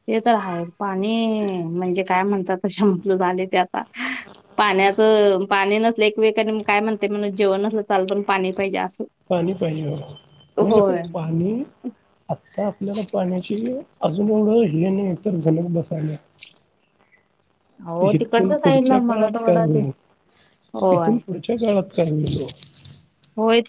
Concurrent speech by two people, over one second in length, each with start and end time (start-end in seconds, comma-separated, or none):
18.1-19.8